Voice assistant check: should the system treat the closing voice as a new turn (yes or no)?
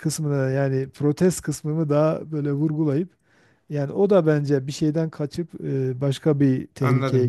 yes